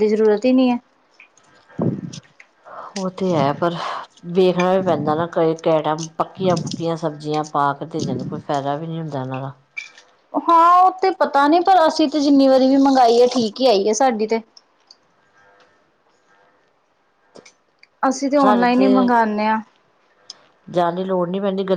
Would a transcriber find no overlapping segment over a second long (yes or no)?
yes